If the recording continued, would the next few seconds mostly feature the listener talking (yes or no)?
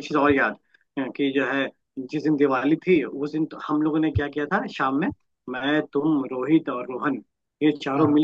no